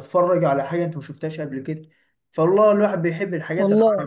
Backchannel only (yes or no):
yes